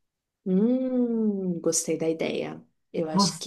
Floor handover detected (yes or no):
no